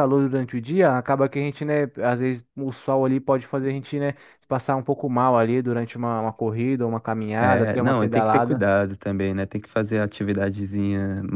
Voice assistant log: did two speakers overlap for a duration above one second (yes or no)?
yes